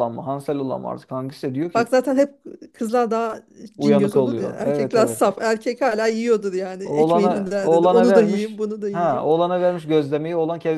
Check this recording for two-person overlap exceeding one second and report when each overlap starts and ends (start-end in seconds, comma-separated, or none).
3.8-5.2, 6.8-9.3